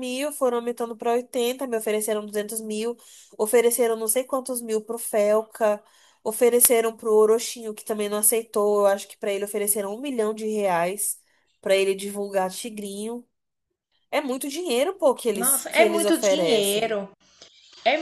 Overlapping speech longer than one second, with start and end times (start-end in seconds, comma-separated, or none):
15.3-17.0